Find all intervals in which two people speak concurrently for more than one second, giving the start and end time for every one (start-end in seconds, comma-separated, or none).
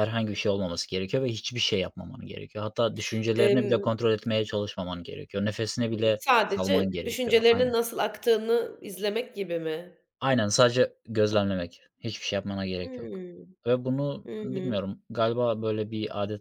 6.2-7.7